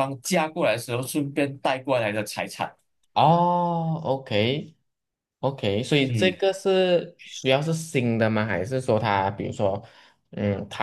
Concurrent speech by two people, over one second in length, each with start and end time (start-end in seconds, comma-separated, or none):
none